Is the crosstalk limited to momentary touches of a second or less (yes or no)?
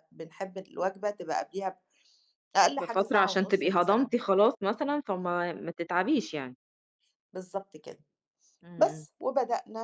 no